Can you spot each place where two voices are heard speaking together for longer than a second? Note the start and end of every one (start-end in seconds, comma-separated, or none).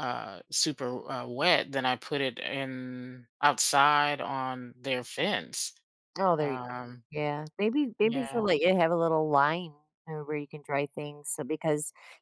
none